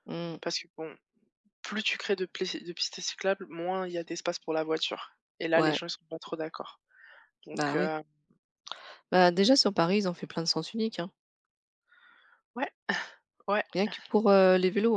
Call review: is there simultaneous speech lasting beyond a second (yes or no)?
no